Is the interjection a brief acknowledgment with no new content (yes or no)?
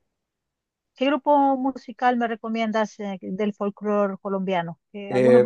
no